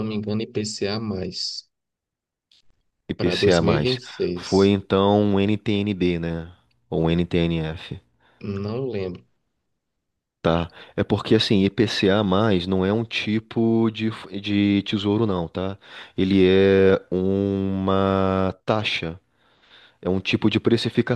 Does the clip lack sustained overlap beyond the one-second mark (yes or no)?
no